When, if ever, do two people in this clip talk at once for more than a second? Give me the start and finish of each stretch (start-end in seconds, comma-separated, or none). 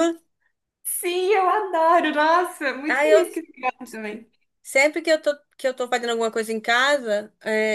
none